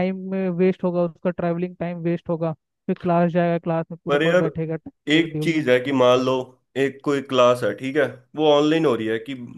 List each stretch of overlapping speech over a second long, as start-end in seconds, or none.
none